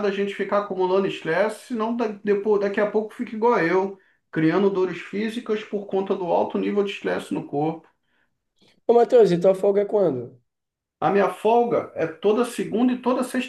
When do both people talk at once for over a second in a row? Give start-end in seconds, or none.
none